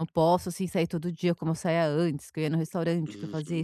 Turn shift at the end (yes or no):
yes